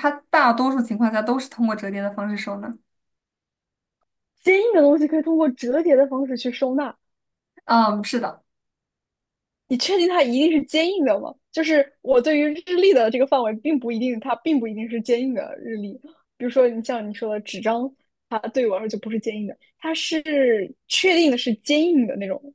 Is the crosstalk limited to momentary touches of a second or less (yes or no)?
yes